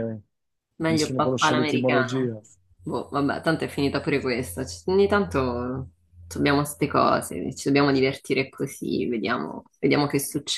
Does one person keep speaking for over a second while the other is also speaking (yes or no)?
yes